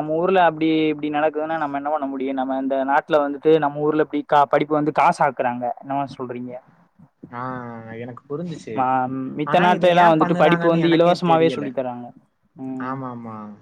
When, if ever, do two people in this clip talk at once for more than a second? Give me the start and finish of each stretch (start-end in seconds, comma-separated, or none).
9.5-11.7